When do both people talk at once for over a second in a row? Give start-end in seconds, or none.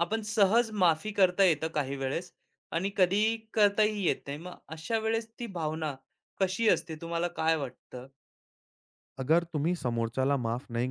none